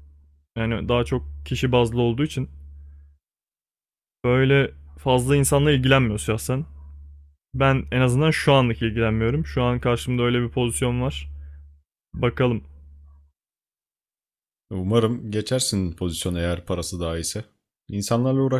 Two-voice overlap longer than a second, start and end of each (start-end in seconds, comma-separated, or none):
none